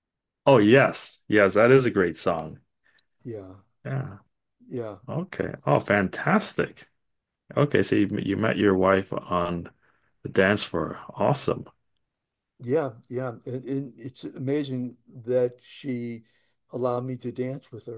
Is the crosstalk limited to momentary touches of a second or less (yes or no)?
yes